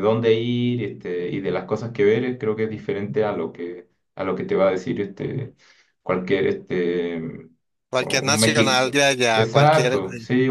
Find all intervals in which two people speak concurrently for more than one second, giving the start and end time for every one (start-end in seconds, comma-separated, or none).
8.0-10.0